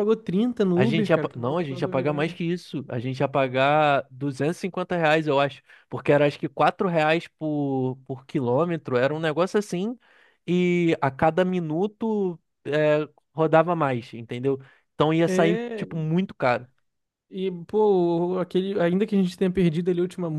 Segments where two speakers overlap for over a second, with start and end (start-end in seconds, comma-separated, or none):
0.7-2.3